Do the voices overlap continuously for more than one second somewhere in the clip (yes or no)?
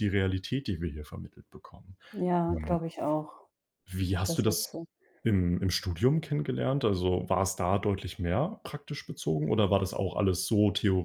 no